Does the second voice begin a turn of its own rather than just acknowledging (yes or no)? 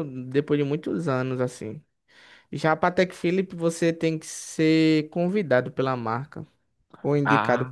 no